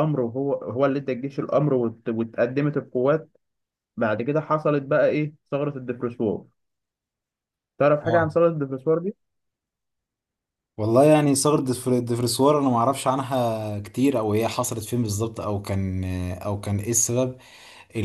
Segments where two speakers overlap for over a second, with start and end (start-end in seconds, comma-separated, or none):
none